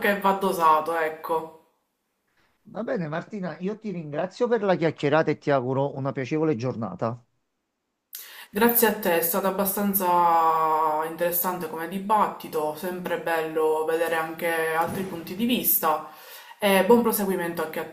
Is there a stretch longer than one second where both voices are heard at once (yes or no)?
no